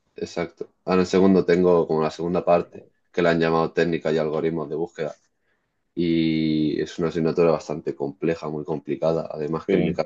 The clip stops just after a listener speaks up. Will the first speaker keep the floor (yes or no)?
yes